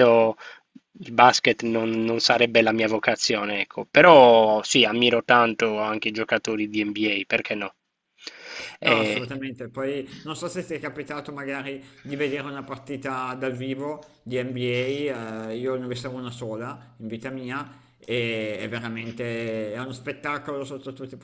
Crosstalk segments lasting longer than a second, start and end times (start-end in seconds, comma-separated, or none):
none